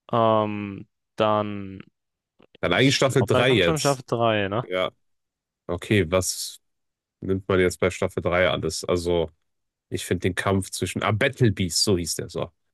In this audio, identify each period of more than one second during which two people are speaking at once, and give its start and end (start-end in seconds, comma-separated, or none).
2.7-4.0